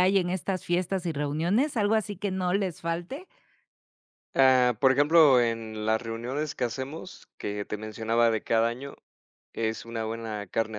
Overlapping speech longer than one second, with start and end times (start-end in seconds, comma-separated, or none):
none